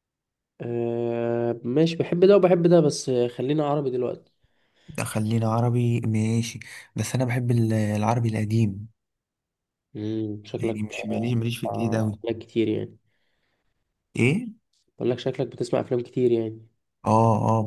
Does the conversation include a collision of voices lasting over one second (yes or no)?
yes